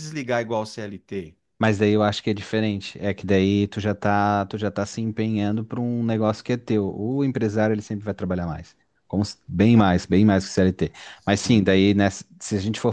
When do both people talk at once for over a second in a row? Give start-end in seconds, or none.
none